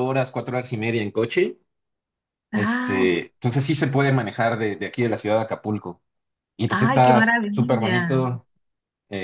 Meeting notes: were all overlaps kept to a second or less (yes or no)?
no